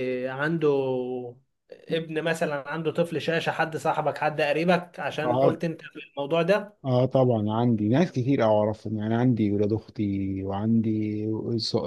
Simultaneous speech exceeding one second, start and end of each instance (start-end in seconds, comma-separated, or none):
none